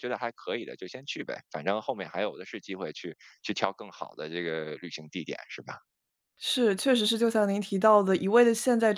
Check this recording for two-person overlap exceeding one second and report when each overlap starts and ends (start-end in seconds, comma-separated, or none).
none